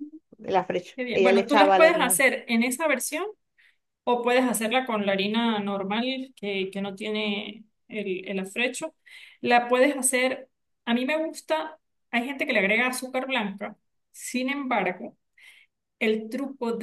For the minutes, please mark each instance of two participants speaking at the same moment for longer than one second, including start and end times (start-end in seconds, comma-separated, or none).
0.9-2.2